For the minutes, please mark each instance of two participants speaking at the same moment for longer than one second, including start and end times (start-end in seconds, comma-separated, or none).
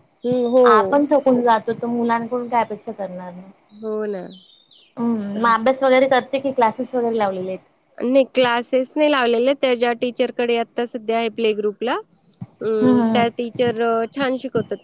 none